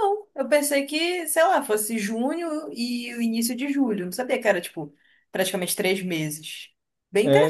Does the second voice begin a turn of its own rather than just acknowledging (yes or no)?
yes